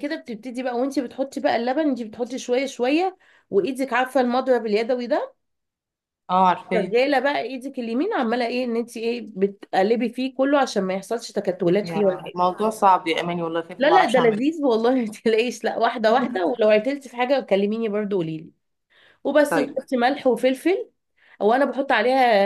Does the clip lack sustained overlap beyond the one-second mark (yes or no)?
yes